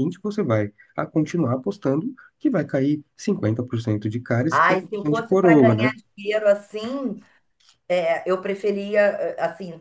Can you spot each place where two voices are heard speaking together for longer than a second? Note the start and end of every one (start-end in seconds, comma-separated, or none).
4.5-5.9